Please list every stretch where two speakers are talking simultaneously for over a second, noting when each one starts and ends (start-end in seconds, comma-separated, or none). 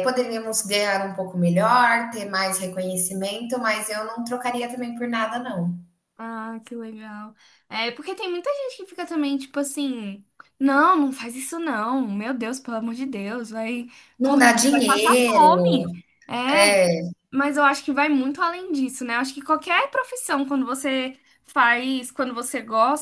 14.2-16.0